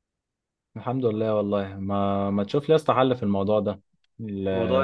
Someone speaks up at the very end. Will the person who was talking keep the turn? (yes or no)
yes